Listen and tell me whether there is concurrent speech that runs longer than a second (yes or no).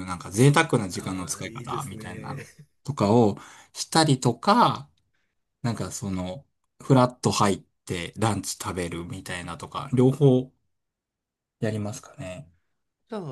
yes